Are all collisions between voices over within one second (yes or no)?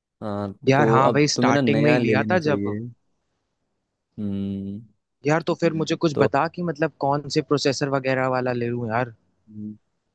no